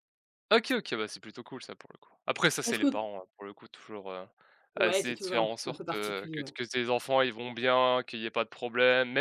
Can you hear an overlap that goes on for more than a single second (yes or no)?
yes